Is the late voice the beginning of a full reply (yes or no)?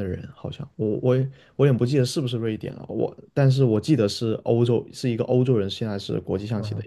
yes